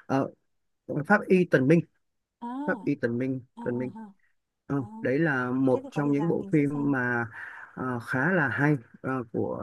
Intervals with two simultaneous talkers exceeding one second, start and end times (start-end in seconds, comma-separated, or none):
5.7-6.9